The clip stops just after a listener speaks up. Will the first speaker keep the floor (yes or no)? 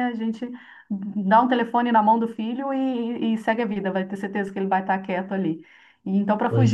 yes